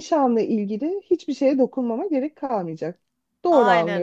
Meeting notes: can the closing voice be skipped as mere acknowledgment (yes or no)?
no